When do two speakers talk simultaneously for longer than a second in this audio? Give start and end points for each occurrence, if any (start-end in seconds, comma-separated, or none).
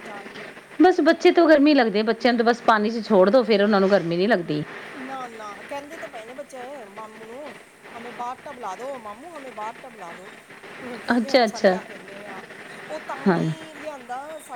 none